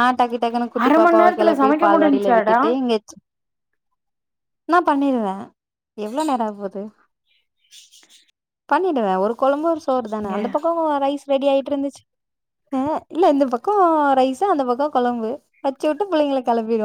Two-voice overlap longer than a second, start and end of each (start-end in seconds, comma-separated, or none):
0.8-2.6